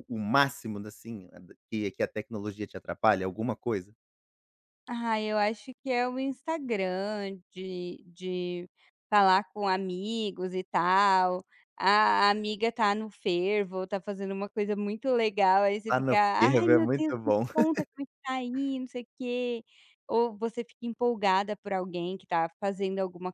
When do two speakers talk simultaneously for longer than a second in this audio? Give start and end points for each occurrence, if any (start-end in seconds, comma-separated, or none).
15.9-17.4